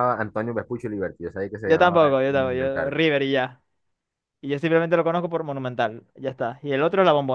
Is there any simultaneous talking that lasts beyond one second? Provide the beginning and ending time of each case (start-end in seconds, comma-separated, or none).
1.6-3.0